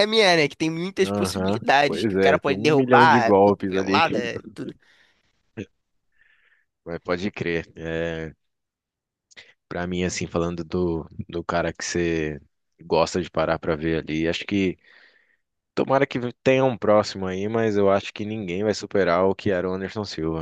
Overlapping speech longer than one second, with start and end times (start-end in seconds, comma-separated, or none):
1.0-4.2